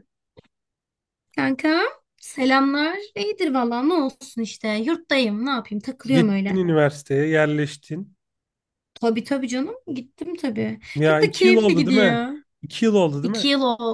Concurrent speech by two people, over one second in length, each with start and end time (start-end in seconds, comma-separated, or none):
11.0-12.2